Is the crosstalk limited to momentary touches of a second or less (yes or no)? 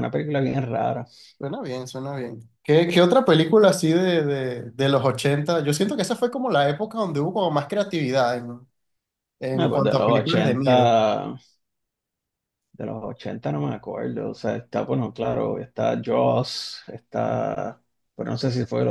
no